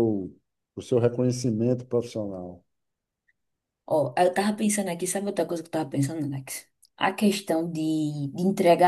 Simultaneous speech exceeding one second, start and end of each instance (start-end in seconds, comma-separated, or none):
none